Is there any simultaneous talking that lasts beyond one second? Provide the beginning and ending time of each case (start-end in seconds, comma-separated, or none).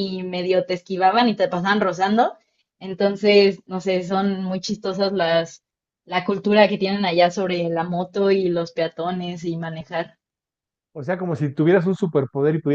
none